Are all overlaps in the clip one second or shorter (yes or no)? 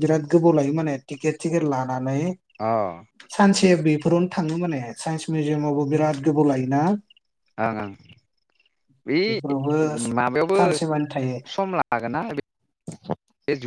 yes